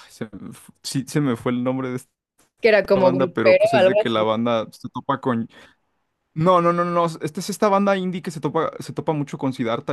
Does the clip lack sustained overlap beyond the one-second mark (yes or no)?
no